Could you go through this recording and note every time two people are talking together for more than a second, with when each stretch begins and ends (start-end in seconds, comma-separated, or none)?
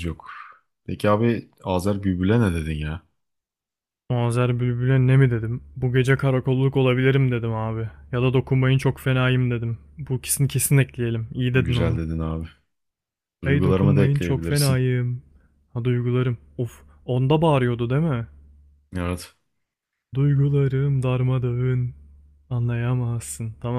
13.4-14.8